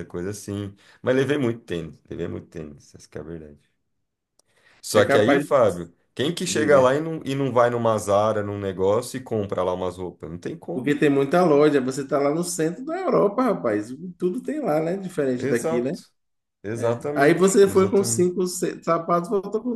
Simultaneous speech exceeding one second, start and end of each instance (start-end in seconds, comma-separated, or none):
16.8-18.3